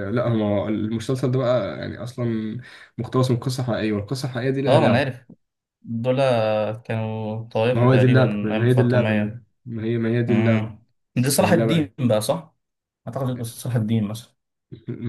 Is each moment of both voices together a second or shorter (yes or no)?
no